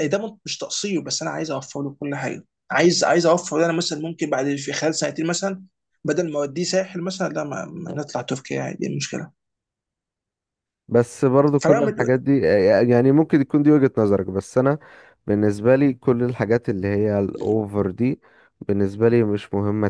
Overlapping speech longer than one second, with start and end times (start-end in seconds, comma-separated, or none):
none